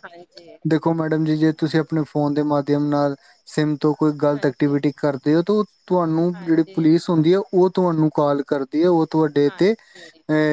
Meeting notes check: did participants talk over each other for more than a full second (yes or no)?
no